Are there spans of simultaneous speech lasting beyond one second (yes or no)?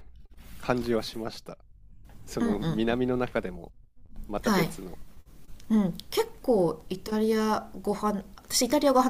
no